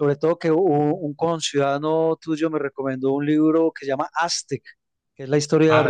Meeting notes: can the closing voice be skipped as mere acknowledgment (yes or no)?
yes